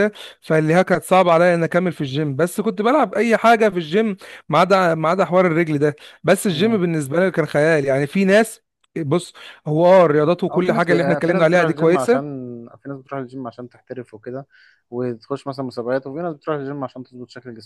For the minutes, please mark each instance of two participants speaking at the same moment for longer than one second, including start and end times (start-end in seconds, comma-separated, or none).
10.5-12.2